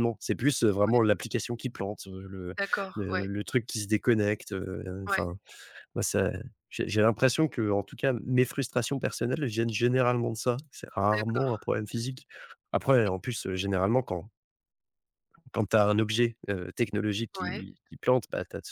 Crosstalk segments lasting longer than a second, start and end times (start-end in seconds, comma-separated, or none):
none